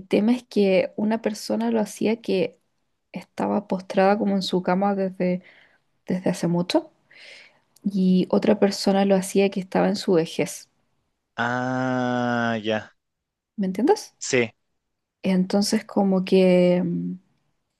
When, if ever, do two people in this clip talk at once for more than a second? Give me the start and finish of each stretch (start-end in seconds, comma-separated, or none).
none